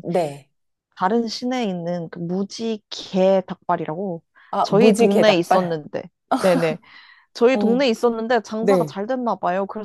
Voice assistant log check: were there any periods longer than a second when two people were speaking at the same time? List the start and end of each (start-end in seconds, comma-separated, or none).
4.6-5.8